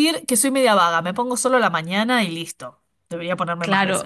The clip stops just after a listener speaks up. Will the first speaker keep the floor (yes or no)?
no